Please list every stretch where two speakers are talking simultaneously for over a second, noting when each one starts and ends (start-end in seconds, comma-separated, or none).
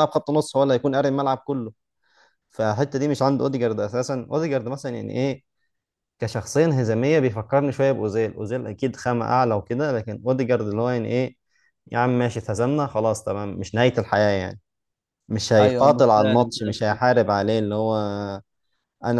15.6-17.3